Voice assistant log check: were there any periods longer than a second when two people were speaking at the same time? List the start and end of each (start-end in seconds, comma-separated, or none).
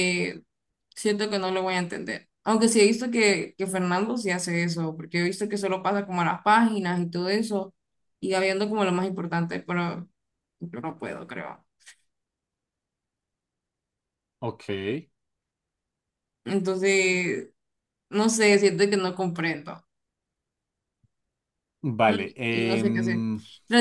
22.1-23.3